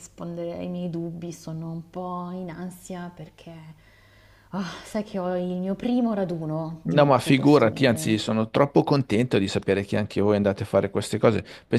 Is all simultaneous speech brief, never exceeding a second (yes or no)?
no